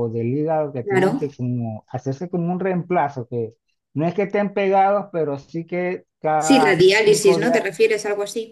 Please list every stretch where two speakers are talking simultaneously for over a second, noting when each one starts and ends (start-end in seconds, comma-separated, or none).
6.4-7.6